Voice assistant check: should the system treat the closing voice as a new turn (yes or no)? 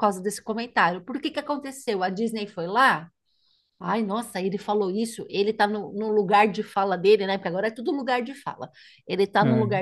no